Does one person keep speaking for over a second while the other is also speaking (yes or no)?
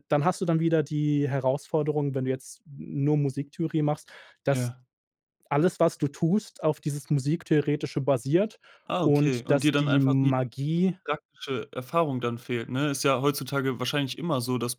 yes